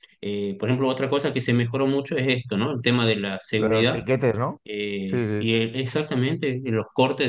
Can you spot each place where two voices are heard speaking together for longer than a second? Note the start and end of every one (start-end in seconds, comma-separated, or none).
none